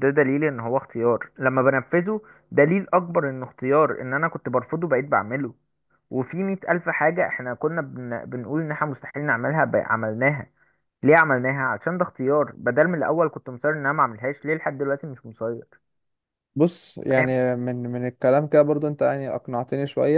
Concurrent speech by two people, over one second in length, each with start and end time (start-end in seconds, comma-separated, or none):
none